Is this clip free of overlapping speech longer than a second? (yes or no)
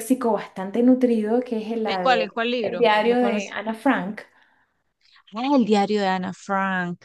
no